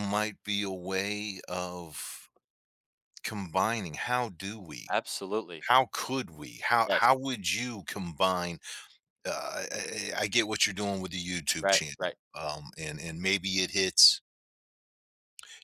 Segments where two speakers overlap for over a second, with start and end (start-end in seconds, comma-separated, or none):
none